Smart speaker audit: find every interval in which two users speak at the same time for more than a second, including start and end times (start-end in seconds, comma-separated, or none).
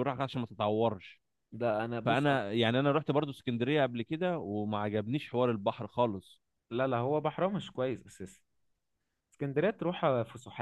none